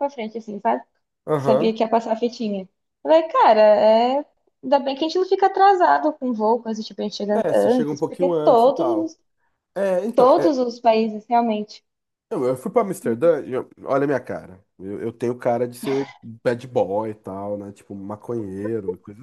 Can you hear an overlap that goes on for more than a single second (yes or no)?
yes